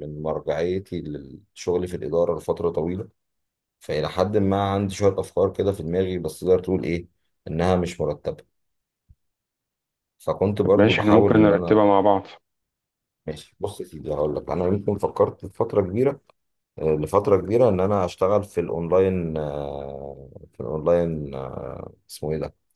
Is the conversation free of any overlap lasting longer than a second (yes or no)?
no